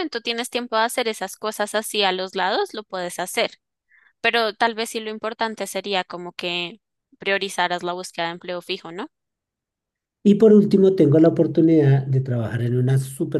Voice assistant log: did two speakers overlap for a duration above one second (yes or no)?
no